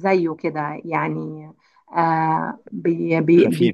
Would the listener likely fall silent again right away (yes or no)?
yes